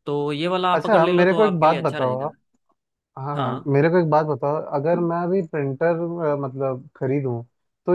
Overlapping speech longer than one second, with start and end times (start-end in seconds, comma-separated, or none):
0.7-2.3